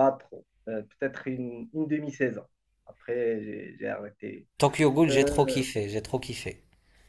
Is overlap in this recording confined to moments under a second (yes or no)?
yes